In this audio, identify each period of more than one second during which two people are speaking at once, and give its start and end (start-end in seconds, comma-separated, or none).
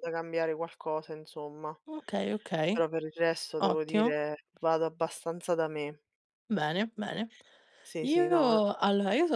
none